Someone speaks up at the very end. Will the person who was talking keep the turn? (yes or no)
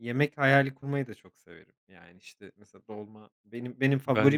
yes